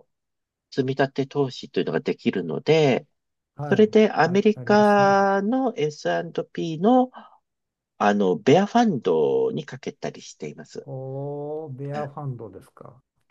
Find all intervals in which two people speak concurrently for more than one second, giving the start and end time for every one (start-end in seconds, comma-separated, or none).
3.6-5.3